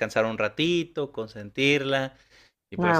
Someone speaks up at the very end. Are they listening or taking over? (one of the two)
listening